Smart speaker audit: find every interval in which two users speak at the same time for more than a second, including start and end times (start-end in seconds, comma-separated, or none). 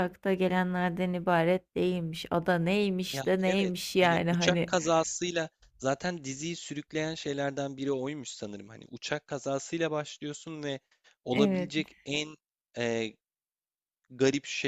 3.1-4.7